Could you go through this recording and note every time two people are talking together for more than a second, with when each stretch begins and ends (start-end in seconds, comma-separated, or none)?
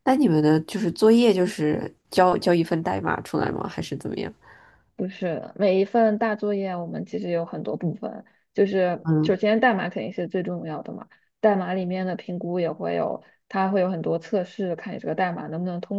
none